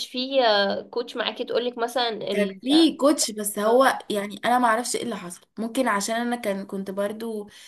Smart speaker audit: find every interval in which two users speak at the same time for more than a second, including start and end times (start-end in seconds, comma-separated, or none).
none